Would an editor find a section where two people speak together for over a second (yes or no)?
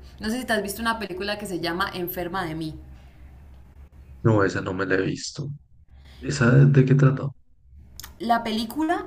no